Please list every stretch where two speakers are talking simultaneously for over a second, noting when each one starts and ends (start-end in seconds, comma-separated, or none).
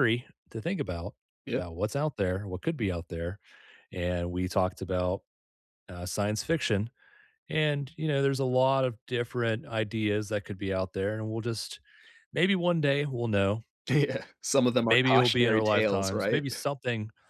14.8-16.4